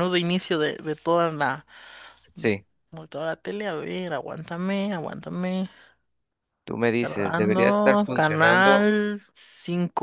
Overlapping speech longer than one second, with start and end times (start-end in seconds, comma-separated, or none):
7.0-8.9